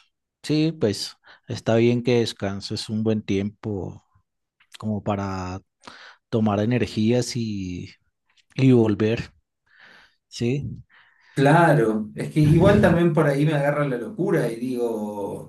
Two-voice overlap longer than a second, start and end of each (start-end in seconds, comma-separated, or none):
none